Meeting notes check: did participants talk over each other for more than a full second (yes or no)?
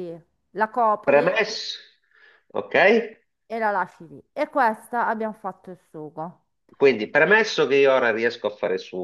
no